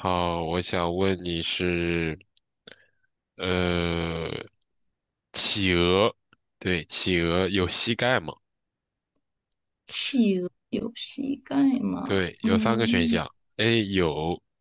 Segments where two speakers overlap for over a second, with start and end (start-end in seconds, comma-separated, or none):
12.0-13.2